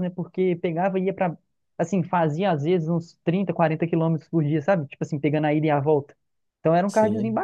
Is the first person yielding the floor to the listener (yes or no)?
no